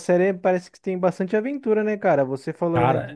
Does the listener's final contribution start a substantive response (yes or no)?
no